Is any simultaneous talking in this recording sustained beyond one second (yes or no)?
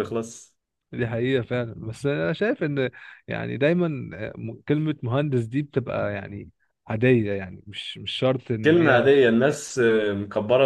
no